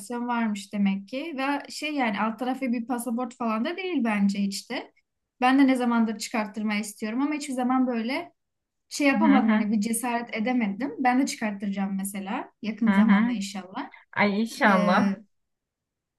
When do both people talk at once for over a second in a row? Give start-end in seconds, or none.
none